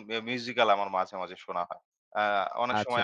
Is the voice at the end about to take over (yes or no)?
no